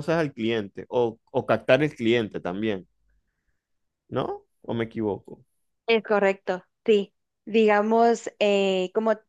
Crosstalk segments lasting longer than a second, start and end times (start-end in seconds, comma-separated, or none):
none